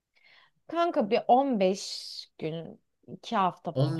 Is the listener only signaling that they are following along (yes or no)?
no